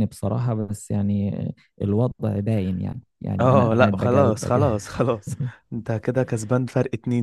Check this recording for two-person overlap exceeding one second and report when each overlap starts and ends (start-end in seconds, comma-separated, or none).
3.4-4.7